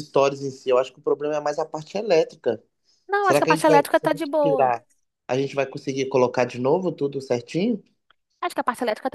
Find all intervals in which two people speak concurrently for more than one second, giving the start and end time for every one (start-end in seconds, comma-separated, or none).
3.2-4.7